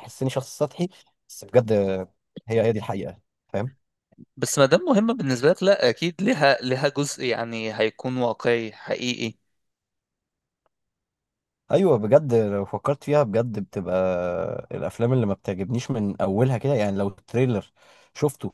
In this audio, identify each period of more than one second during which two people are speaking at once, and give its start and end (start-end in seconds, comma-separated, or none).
none